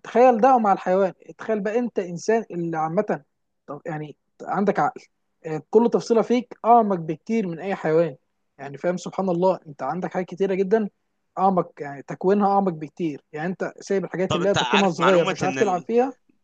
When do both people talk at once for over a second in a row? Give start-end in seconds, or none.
14.3-15.9